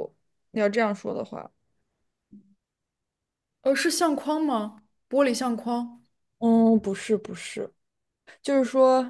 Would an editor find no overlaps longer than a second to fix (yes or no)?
yes